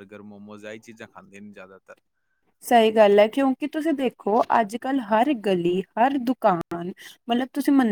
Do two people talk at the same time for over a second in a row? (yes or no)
no